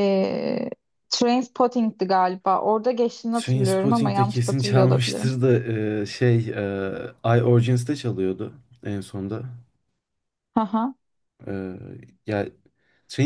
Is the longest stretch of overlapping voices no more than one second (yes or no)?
no